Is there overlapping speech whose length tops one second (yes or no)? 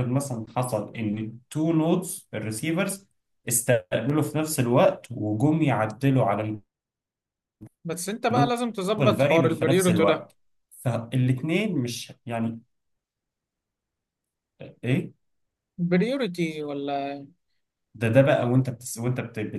yes